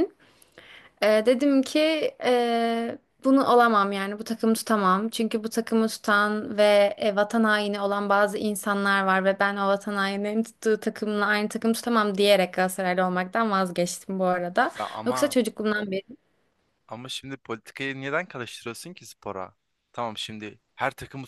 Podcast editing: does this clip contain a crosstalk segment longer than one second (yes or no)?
no